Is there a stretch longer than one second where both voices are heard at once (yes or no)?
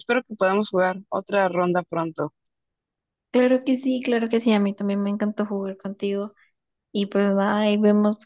no